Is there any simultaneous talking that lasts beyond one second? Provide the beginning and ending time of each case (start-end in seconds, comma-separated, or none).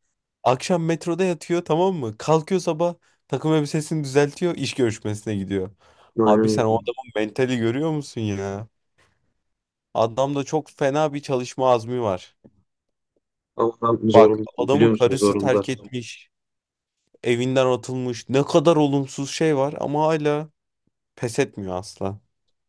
14.1-15.7